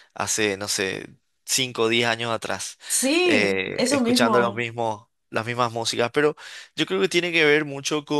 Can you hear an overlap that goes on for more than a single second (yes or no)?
yes